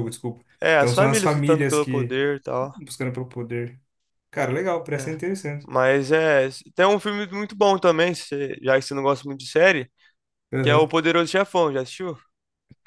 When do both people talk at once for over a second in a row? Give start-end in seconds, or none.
0.6-2.2